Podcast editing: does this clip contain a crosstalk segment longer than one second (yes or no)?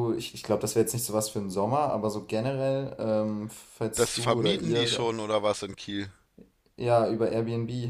yes